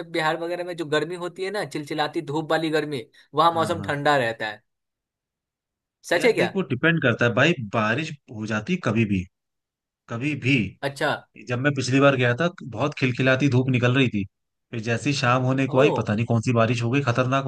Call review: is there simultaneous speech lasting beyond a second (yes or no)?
no